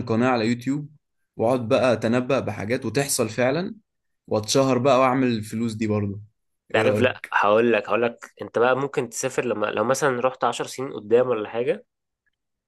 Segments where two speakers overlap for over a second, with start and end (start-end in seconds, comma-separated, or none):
none